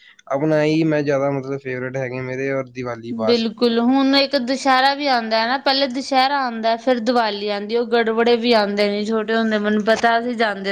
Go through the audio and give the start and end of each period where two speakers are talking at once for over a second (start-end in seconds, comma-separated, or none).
none